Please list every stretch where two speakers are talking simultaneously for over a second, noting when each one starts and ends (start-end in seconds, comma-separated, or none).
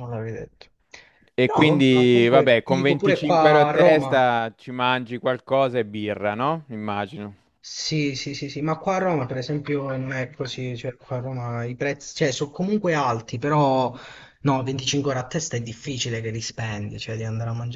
1.5-4.3